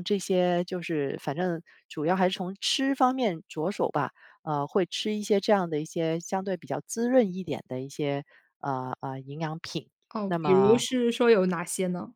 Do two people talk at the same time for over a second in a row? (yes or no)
no